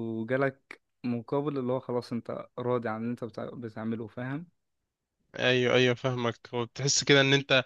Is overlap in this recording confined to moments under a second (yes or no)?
yes